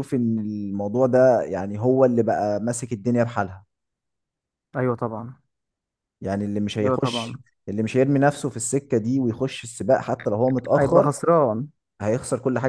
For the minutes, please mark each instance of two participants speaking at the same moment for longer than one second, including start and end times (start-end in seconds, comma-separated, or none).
none